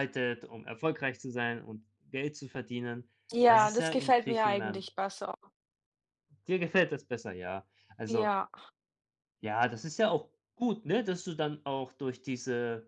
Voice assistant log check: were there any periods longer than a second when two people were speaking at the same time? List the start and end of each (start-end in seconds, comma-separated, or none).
3.5-4.9